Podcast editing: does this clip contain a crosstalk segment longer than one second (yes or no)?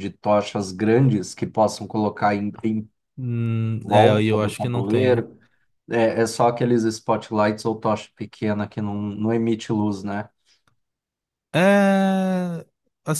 yes